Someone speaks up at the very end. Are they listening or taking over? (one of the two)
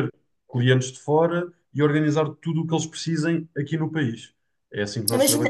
taking over